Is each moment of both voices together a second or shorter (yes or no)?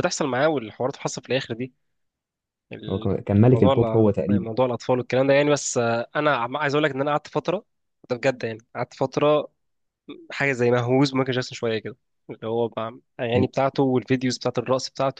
no